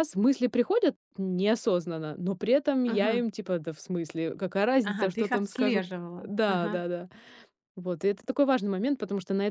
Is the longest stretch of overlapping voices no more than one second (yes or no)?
no